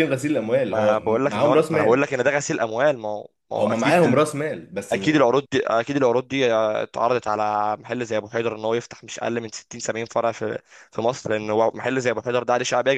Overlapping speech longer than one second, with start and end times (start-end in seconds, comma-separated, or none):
0.7-2.1